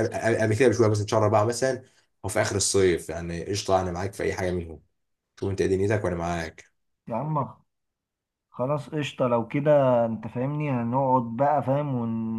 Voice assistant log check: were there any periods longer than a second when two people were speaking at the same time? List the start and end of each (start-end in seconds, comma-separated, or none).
none